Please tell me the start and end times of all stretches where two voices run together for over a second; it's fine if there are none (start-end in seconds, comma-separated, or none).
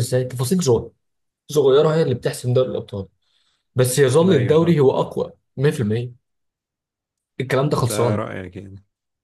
none